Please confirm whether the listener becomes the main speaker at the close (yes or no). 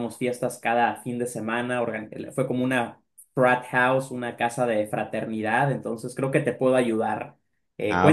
no